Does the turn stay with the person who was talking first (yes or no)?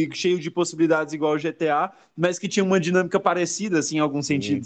no